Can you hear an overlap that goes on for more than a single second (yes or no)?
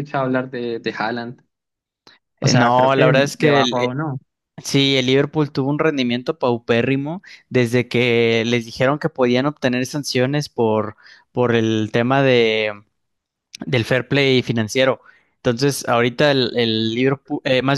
yes